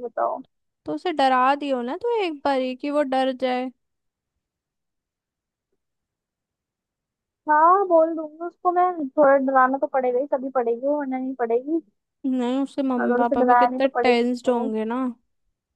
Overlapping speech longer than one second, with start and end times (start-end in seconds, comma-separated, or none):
13.0-14.7